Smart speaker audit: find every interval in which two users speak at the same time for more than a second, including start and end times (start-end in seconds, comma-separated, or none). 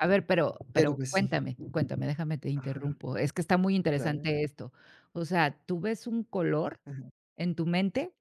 none